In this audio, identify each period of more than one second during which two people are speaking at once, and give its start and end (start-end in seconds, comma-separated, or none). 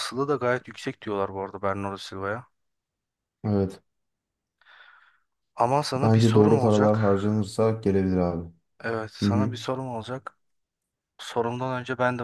6.0-7.2